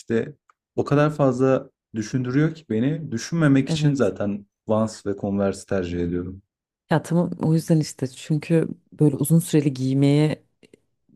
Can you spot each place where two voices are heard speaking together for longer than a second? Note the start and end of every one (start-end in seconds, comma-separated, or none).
none